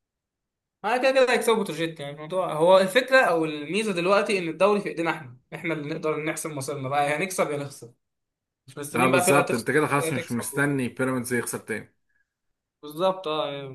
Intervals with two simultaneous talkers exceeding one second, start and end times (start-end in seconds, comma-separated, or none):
8.9-10.9